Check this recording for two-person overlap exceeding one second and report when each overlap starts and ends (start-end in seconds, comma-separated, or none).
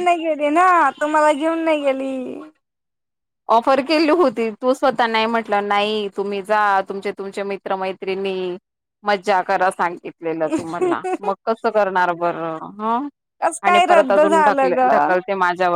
13.7-15.1